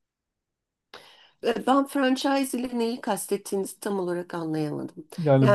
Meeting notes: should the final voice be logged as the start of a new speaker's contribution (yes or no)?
yes